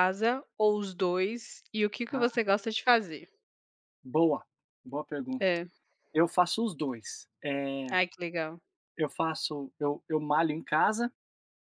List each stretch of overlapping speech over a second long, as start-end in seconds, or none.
none